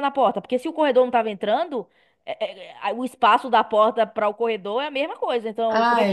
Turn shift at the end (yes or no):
yes